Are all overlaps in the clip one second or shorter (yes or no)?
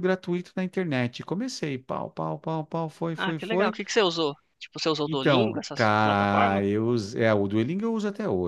no